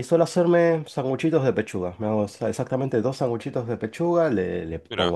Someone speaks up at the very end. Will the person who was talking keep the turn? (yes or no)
yes